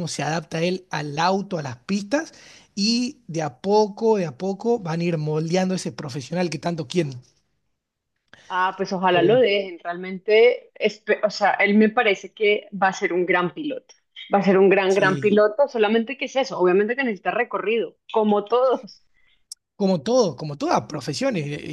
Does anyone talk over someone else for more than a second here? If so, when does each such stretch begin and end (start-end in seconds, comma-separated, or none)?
none